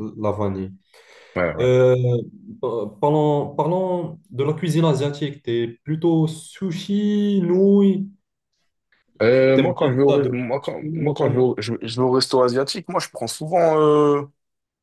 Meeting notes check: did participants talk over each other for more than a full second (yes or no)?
yes